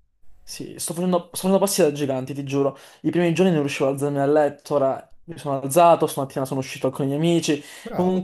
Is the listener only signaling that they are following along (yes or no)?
yes